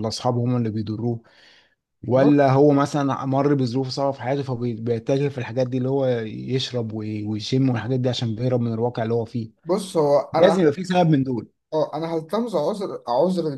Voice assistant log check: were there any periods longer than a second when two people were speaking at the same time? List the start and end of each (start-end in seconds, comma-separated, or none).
none